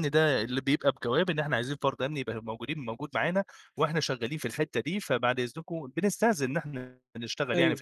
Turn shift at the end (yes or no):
no